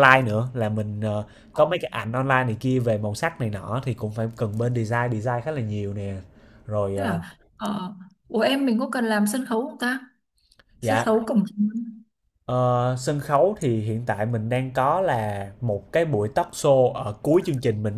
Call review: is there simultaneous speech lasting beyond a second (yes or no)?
no